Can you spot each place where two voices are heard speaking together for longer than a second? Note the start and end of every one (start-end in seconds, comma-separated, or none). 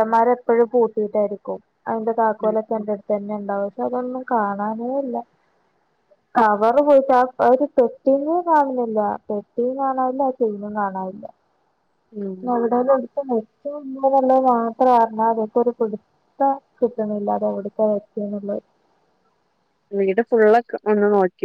none